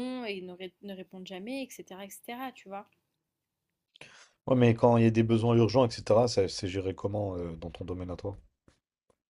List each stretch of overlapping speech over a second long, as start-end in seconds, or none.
none